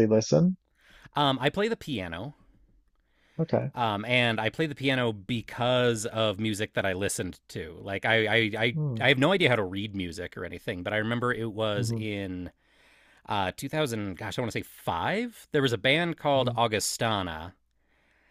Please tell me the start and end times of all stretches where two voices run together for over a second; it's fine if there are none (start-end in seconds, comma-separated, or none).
none